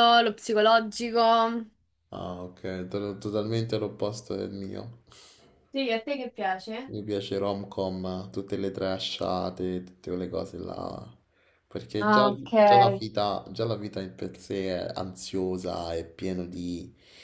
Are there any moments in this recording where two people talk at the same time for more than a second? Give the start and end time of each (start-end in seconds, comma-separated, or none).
none